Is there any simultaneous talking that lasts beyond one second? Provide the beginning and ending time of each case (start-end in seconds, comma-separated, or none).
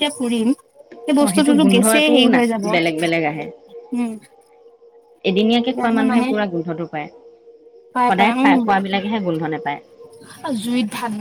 1.2-3.5